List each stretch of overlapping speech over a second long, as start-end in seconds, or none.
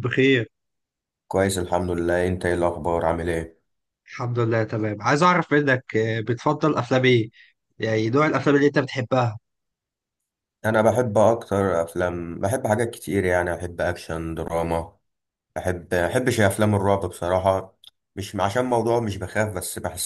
none